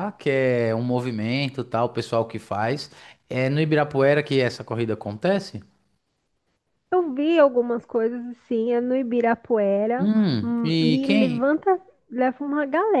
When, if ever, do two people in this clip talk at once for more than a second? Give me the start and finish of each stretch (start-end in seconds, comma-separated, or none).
10.0-11.5